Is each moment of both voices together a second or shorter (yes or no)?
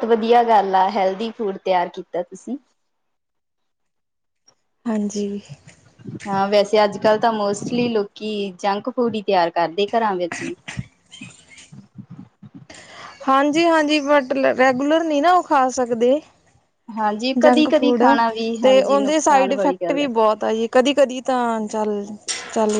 no